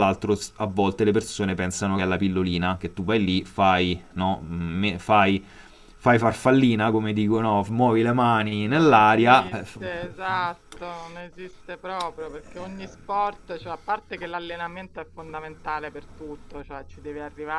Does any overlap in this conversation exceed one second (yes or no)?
yes